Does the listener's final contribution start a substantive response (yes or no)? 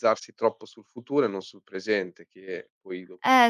yes